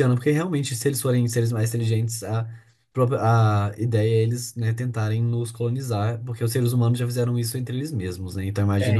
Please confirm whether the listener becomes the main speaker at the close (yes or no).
yes